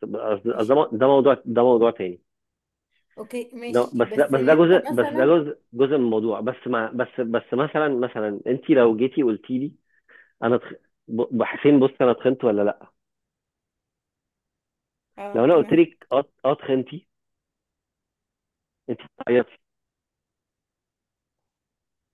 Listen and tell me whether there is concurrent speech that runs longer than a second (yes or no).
yes